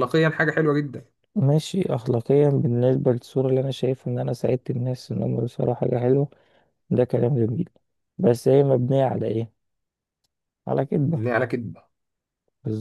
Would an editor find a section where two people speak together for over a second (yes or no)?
no